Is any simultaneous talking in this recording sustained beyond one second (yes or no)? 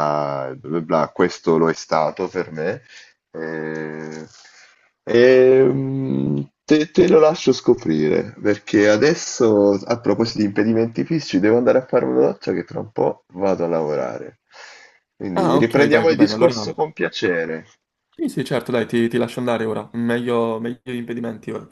yes